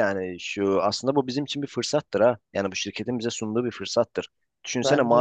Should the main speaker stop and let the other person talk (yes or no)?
no